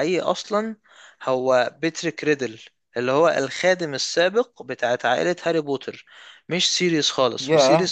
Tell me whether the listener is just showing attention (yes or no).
no